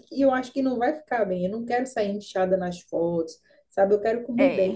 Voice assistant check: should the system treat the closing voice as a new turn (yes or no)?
no